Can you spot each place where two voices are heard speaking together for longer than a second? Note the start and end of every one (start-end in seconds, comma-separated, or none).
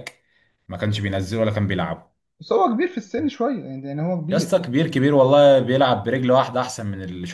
none